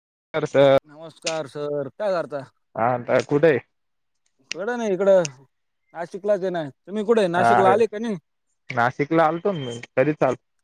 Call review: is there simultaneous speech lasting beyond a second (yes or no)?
no